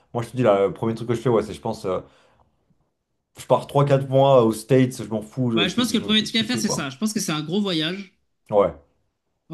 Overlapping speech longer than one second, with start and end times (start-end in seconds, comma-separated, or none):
5.5-6.9